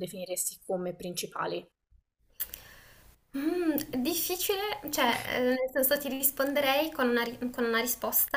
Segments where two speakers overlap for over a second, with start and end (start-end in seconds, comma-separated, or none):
none